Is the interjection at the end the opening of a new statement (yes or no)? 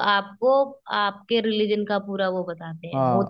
yes